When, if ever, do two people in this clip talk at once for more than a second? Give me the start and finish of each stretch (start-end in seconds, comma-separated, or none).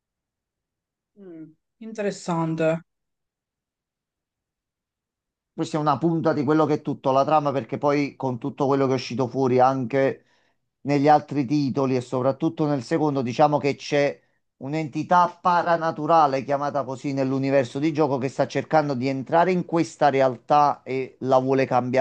none